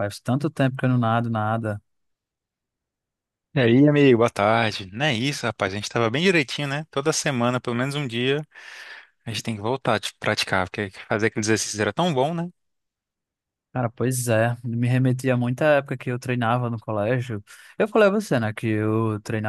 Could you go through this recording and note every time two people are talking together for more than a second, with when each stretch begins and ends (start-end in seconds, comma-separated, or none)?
none